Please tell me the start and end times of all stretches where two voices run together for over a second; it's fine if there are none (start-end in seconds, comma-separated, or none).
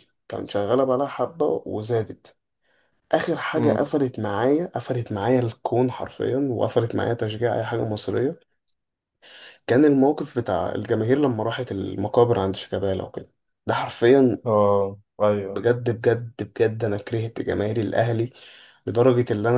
none